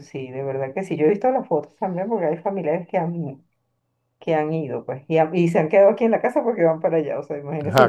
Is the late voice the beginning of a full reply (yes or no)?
no